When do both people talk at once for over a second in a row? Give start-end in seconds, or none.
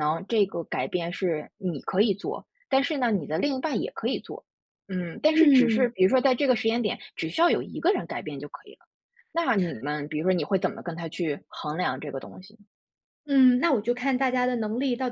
none